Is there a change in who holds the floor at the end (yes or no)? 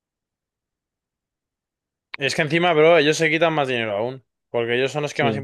no